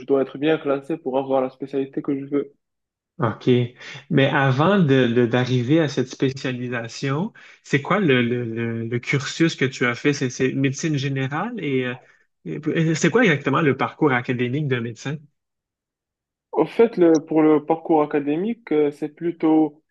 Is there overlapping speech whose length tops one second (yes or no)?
no